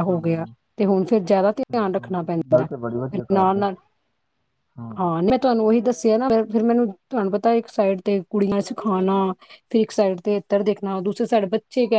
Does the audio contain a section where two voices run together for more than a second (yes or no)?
yes